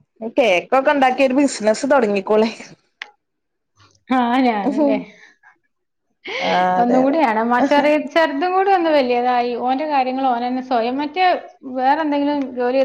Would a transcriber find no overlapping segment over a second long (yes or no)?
yes